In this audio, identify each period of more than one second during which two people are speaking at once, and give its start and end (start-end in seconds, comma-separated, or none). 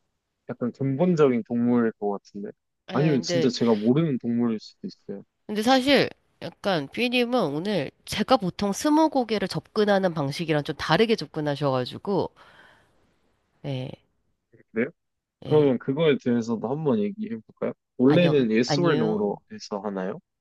18.0-19.4